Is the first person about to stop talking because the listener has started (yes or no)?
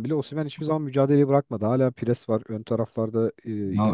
yes